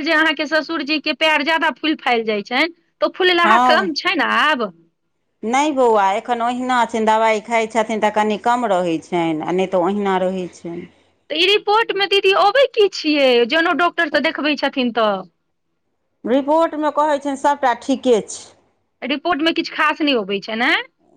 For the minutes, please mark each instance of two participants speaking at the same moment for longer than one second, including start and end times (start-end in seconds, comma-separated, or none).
none